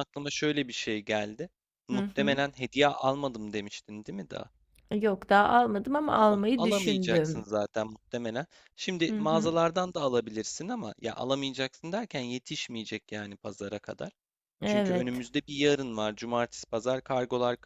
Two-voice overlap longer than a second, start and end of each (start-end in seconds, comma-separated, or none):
6.2-7.4